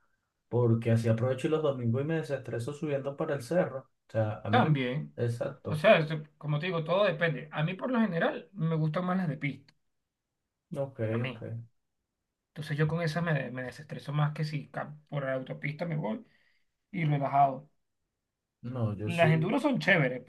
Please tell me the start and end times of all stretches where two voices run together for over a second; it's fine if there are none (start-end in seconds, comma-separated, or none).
none